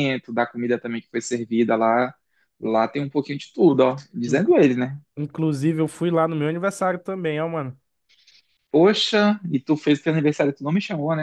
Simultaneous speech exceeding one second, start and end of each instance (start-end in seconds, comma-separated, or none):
none